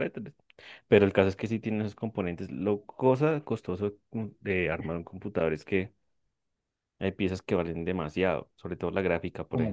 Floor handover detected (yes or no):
yes